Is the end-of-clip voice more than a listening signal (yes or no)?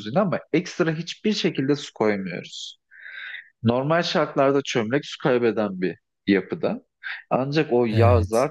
no